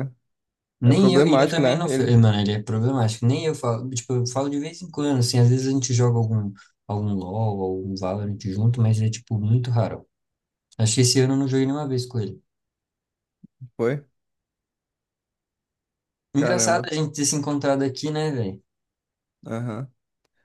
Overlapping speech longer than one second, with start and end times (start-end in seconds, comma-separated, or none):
0.8-2.2